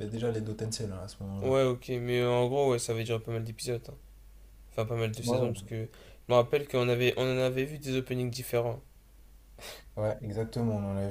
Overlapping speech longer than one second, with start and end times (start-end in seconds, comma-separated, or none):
none